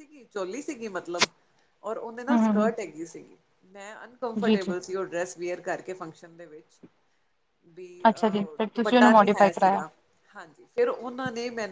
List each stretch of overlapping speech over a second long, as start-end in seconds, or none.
8.1-9.8